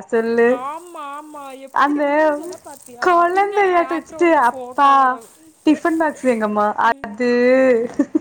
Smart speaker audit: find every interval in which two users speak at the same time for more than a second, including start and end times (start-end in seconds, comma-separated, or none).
3.0-5.1